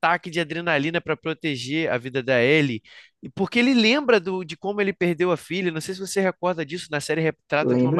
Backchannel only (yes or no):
yes